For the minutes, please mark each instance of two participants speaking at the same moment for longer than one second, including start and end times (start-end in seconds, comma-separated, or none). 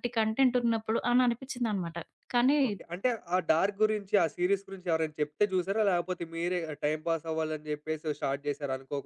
none